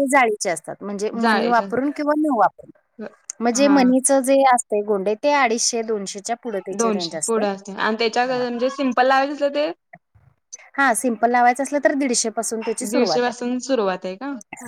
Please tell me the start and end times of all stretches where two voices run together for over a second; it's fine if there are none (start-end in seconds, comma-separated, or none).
none